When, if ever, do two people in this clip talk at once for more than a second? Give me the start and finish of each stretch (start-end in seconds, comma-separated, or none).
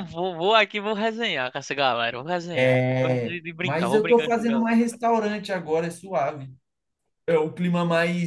2.5-4.8